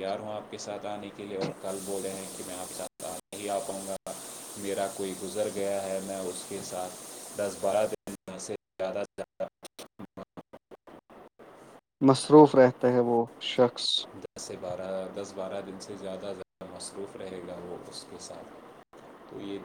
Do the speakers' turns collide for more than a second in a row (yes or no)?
no